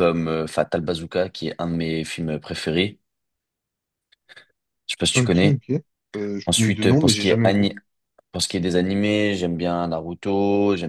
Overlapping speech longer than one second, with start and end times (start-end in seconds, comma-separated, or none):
6.5-7.7